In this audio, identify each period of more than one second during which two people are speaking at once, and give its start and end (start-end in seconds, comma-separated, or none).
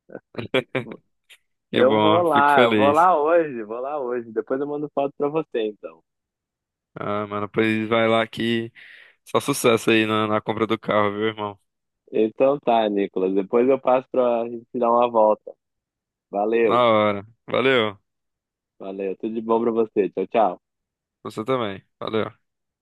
1.7-3.1